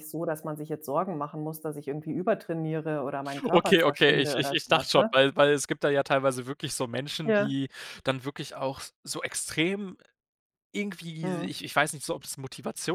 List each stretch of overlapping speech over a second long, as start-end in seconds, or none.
3.4-5.1